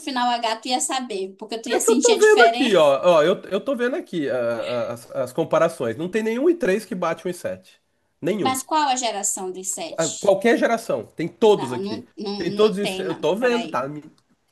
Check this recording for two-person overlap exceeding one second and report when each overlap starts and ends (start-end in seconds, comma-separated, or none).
1.7-2.9, 11.5-13.9